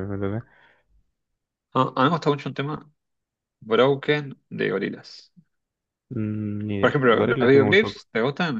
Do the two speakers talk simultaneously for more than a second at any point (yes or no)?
yes